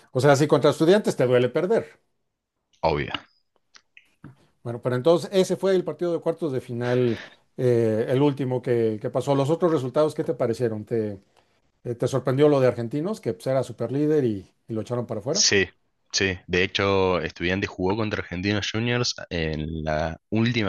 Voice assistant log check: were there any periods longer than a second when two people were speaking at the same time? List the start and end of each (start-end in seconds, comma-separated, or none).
none